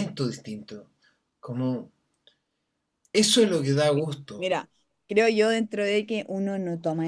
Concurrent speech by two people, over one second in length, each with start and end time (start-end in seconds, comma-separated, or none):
none